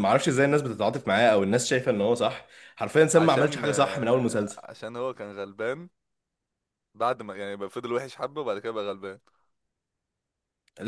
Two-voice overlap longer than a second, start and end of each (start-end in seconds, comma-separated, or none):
3.1-4.6